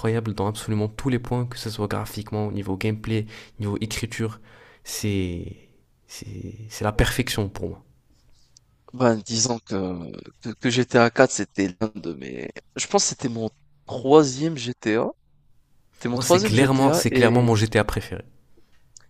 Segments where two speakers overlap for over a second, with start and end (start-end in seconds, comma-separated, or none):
16.1-17.5